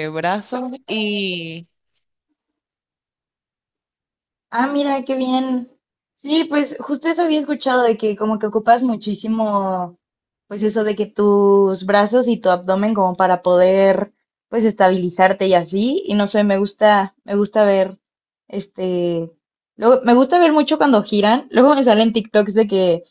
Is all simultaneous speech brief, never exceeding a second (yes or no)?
yes